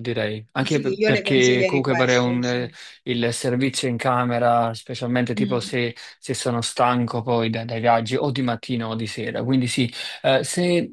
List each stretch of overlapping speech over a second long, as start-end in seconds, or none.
0.6-2.7